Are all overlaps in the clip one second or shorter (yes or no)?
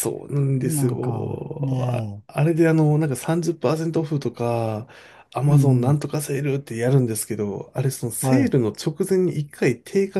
no